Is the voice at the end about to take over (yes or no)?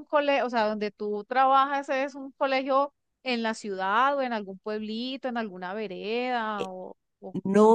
yes